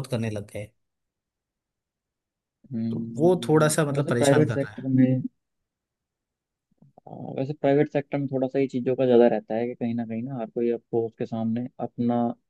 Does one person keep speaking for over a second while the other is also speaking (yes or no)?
yes